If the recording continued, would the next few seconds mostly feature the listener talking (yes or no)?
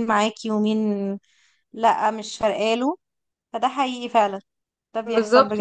yes